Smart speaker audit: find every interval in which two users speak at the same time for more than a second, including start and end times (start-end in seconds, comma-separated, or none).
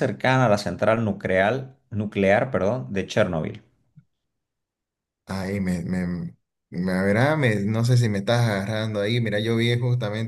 none